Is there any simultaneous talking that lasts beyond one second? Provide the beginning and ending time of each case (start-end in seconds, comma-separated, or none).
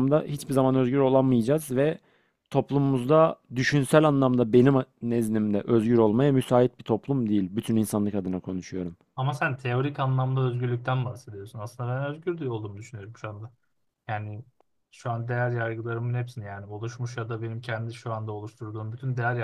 none